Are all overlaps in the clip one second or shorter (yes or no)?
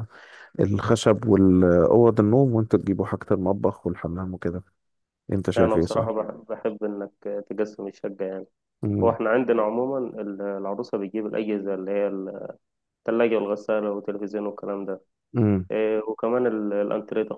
yes